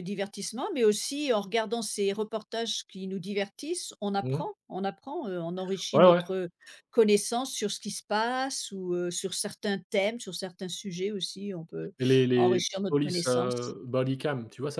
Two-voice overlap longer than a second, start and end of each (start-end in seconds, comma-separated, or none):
12.3-13.8